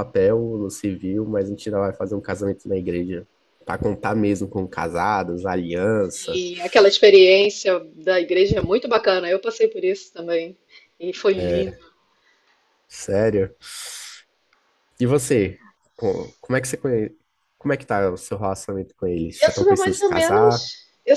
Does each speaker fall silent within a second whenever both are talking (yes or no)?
no